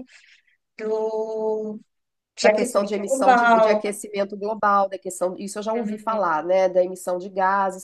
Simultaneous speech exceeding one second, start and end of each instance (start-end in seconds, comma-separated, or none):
2.4-4.0